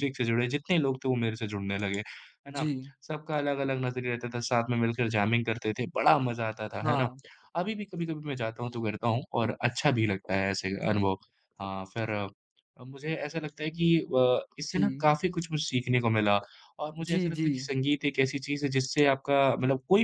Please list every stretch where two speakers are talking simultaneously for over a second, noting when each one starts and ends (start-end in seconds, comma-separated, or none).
none